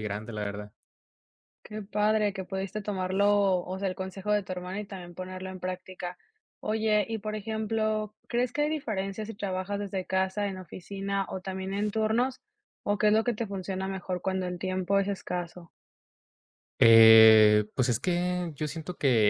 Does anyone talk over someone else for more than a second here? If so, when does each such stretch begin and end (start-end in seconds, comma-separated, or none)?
none